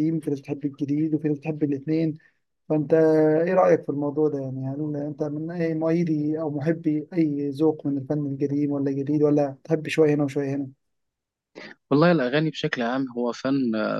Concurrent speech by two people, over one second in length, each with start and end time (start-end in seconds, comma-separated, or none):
none